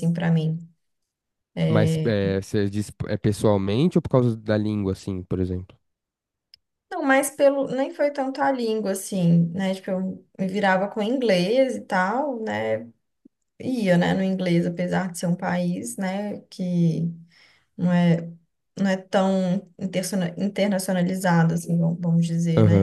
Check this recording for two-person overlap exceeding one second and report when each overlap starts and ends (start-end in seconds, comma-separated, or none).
none